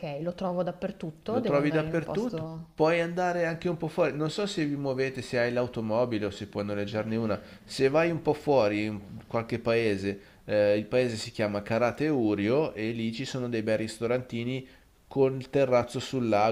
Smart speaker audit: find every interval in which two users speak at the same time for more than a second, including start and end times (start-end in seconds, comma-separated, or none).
1.3-2.7